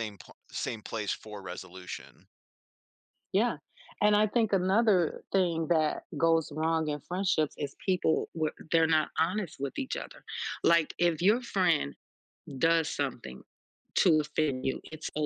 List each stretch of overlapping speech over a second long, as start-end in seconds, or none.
none